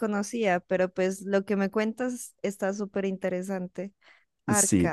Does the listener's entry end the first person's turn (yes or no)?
yes